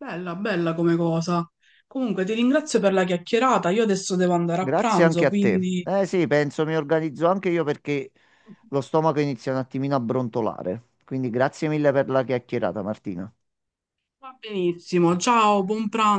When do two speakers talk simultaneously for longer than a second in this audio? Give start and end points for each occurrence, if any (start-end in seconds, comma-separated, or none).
4.5-5.9